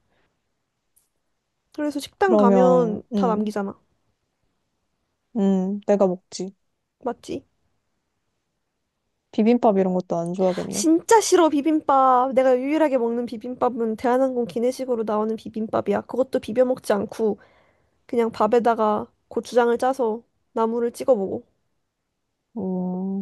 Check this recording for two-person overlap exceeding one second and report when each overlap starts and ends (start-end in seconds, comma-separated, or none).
2.2-3.5